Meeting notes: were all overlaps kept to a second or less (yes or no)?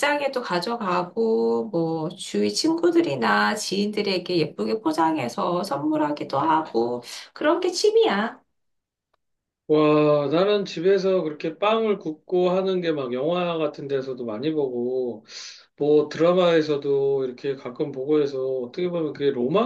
yes